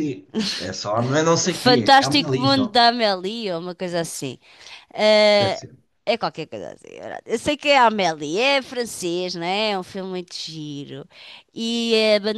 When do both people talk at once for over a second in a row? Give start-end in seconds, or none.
1.4-2.8